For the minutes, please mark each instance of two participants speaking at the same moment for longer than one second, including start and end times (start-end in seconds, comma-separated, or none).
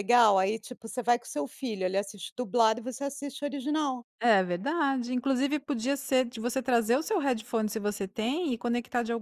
none